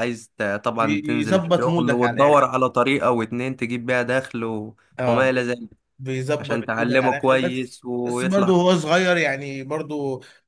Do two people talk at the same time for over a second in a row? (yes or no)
yes